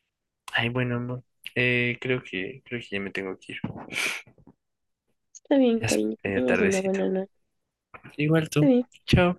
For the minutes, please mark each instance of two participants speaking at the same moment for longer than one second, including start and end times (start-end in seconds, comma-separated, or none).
5.7-7.0